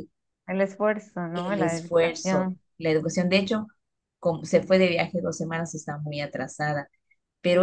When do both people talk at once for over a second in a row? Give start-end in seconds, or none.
1.3-2.6